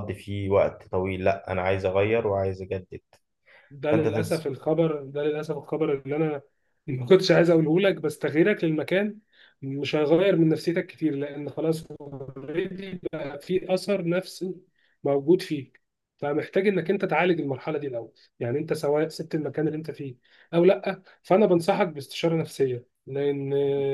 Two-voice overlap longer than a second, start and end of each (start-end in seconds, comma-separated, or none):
none